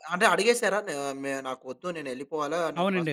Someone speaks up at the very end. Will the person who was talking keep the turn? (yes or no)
no